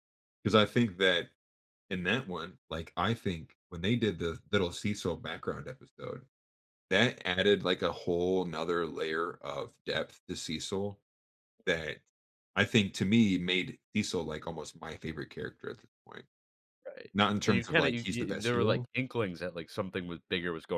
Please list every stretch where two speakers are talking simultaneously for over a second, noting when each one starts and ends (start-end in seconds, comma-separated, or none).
17.1-18.9